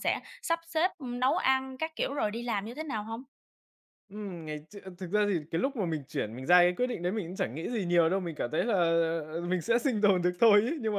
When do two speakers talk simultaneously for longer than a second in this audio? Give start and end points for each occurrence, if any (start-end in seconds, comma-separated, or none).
none